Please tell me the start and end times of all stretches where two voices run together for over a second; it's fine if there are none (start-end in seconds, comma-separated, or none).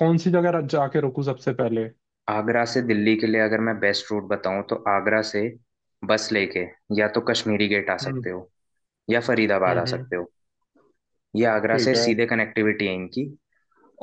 none